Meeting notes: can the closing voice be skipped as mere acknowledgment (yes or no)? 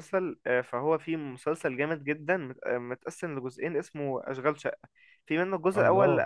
yes